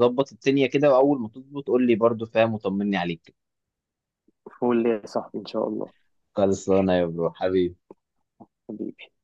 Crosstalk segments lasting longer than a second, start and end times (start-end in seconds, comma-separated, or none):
none